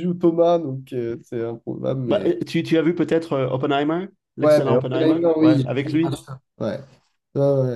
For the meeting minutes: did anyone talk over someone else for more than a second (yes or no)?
yes